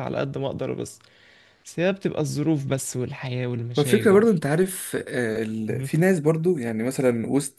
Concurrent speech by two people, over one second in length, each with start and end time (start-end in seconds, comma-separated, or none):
none